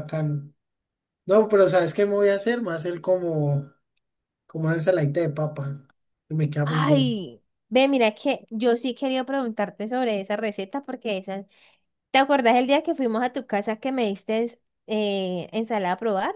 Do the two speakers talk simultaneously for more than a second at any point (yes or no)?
no